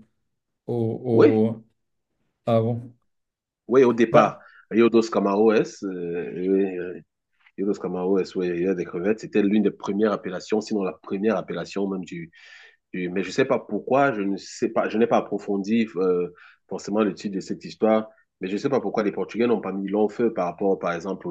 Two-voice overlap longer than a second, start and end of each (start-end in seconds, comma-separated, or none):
none